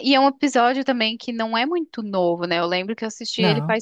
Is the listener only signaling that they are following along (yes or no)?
yes